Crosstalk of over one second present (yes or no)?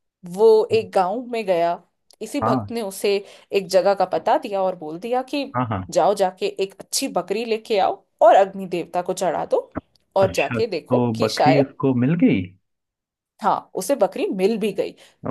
yes